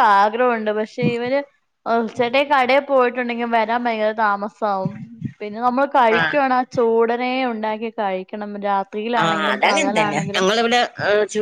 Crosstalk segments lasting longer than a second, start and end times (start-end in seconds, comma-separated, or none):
none